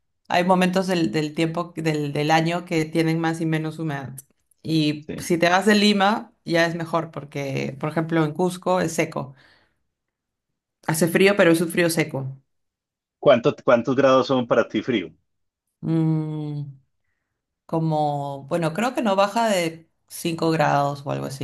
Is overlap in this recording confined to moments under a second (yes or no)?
yes